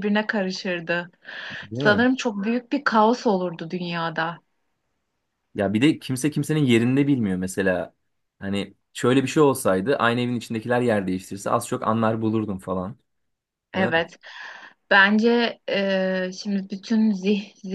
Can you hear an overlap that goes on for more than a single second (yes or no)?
no